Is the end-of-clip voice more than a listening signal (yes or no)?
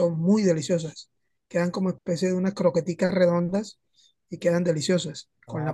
yes